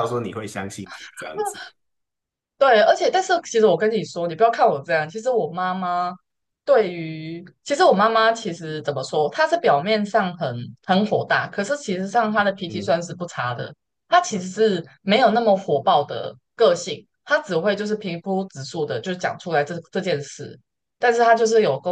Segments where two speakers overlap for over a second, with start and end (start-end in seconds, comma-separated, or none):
none